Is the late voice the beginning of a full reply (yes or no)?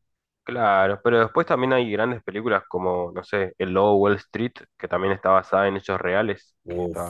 yes